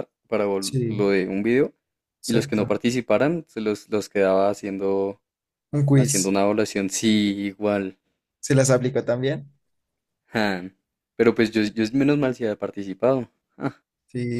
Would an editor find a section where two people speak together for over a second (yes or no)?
no